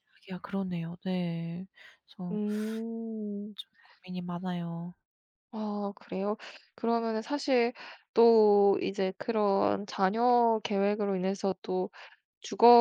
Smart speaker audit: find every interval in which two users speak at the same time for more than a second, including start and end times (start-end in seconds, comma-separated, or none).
none